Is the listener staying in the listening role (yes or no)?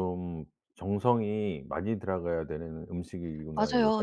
no